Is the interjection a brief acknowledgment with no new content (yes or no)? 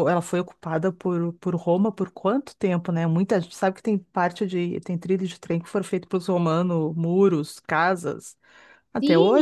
no